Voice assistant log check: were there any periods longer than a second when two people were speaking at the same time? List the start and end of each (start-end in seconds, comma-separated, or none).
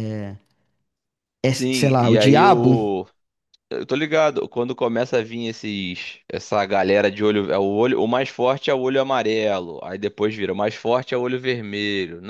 1.6-2.8